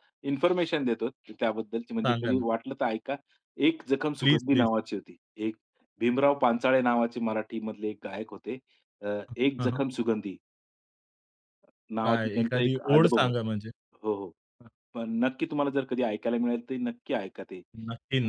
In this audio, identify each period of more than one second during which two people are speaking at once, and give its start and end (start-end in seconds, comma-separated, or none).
12.0-13.4